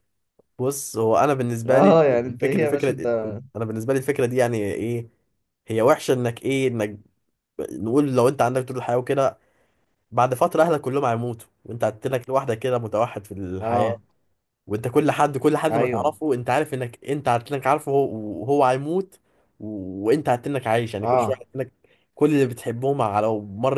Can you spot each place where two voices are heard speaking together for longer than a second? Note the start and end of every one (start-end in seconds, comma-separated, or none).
1.6-3.1